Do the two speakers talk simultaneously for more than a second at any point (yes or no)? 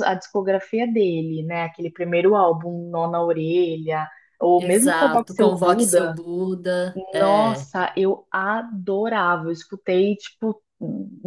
yes